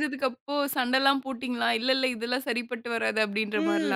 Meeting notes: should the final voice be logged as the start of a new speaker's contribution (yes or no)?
yes